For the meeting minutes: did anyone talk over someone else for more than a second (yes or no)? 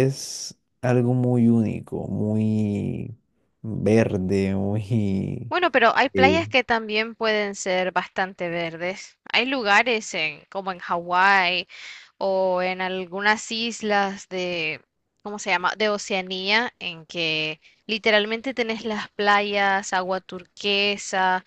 no